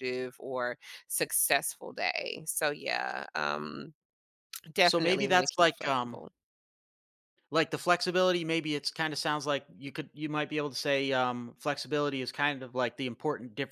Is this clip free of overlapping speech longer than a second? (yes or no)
no